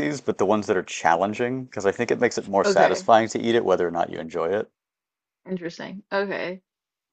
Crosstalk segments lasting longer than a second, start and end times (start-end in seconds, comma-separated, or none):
none